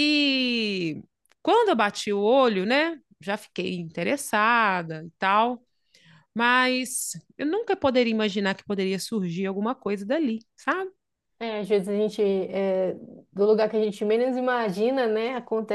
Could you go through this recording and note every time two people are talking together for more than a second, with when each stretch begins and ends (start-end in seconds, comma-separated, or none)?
none